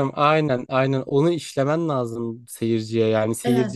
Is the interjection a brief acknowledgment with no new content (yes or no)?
yes